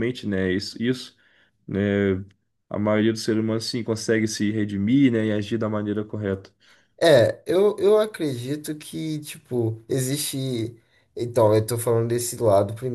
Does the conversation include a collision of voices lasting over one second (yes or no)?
no